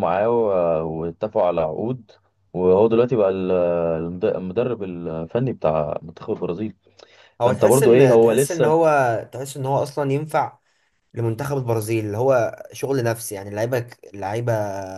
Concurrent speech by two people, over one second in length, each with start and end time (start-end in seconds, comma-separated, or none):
7.4-8.8